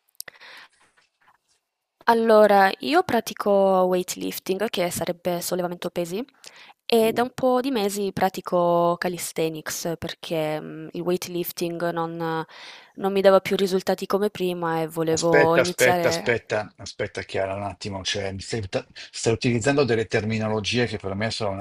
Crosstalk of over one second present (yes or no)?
yes